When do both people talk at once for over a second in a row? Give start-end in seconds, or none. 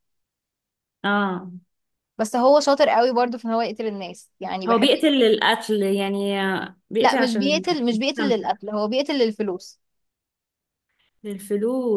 7.0-8.5